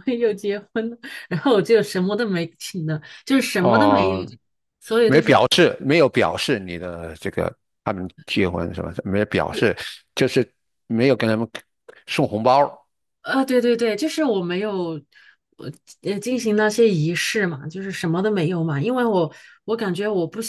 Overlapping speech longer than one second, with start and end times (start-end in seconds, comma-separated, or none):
none